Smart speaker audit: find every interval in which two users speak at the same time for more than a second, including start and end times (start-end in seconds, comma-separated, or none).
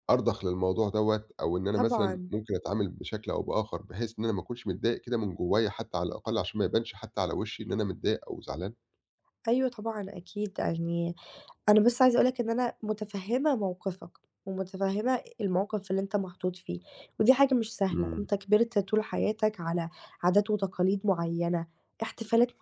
none